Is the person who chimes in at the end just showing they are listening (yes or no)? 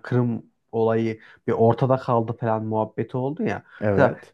yes